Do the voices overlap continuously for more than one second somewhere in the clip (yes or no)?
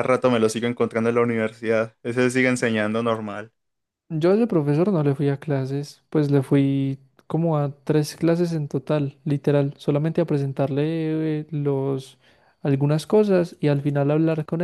no